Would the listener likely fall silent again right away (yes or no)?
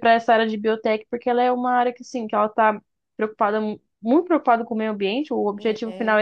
yes